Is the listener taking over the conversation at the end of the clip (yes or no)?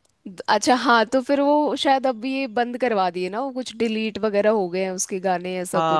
yes